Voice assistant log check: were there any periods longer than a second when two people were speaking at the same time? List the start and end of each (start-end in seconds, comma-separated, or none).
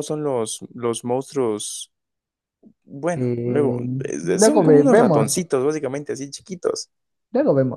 3.1-5.4